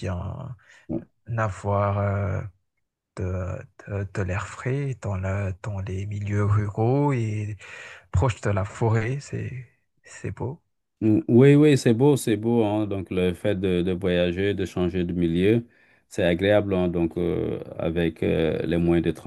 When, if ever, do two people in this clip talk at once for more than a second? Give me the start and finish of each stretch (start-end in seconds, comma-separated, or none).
none